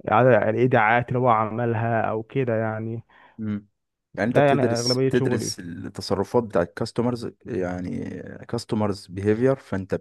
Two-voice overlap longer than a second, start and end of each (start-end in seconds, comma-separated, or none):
4.3-5.5